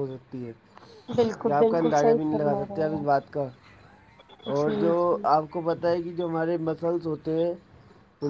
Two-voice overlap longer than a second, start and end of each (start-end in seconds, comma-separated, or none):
1.2-3.0